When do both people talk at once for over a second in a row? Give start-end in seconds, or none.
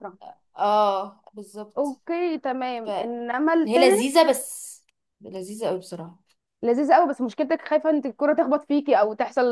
2.8-4.2